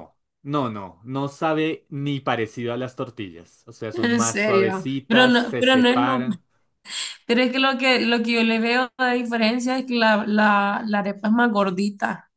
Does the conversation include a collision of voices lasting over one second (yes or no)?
yes